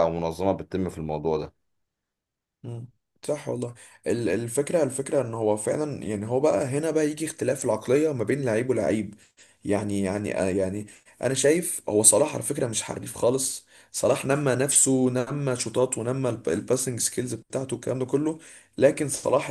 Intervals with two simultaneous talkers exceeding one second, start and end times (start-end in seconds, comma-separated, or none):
none